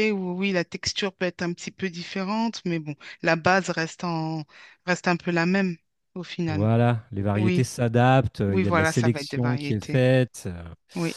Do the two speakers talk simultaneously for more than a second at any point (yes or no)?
yes